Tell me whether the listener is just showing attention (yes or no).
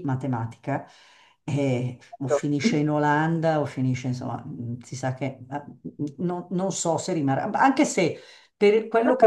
yes